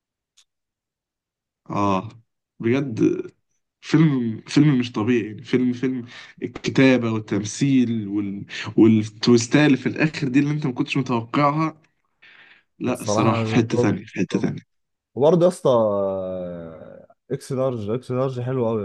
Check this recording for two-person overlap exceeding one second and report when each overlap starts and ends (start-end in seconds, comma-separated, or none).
12.9-14.5